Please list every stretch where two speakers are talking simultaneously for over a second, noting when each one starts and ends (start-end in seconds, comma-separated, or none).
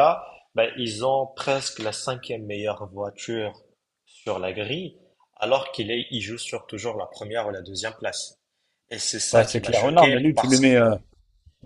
9.3-10.8